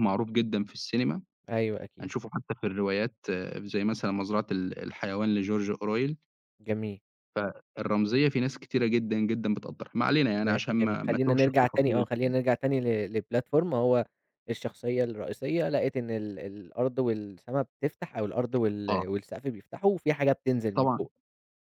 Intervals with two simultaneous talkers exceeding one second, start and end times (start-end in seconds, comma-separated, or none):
10.4-12.1